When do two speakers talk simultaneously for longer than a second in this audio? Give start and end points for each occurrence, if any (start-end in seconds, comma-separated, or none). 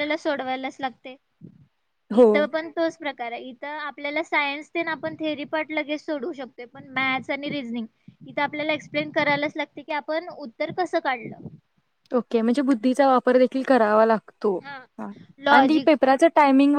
none